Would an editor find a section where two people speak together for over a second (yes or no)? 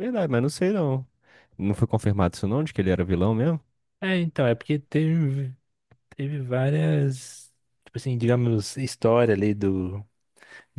no